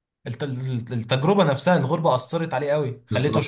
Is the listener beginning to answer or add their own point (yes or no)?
yes